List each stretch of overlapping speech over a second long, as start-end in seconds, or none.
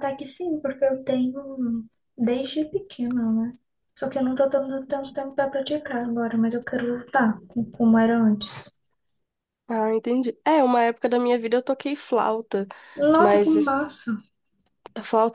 none